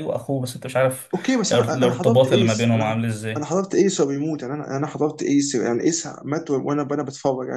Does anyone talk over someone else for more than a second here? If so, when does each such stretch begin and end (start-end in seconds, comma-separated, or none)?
1.5-3.5